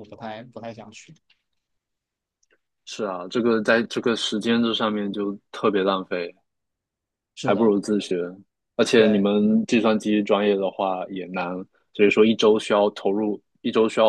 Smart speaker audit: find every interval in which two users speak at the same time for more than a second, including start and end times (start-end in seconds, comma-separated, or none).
none